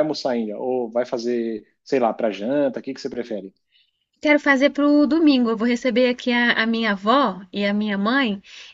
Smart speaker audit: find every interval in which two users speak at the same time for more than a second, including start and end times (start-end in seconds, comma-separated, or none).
none